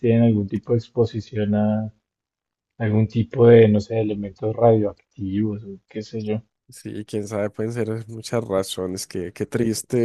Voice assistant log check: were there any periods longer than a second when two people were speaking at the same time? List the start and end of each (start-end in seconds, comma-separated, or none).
none